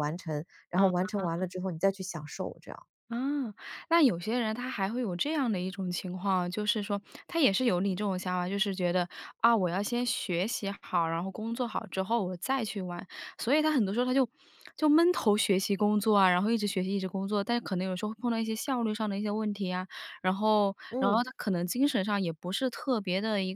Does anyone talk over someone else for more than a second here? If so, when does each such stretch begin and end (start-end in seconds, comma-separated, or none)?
none